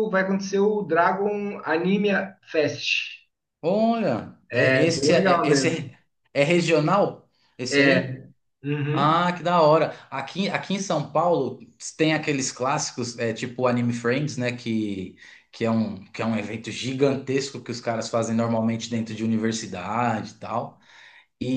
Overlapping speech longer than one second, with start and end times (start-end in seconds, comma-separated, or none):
4.5-5.9